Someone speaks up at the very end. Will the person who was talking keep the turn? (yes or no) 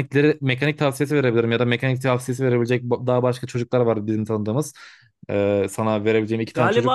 no